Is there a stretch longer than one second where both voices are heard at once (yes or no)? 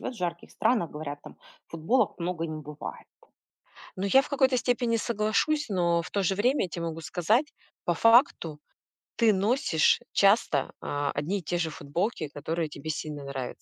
no